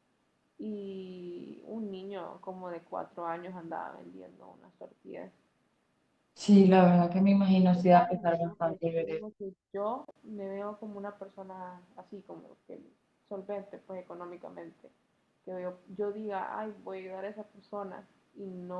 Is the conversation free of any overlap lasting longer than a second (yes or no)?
no